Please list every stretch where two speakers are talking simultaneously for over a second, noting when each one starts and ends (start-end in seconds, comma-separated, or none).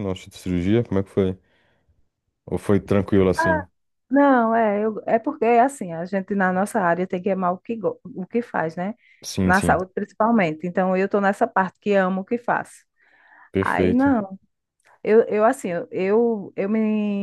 none